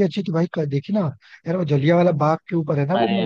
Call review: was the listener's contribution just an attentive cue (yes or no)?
no